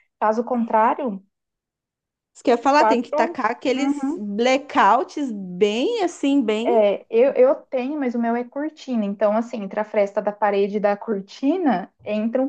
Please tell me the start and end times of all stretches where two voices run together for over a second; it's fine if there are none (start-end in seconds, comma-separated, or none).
2.7-4.2